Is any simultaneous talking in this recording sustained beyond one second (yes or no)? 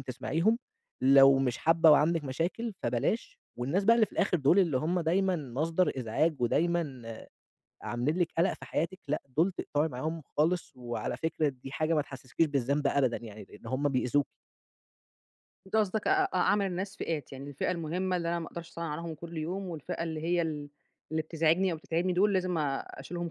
no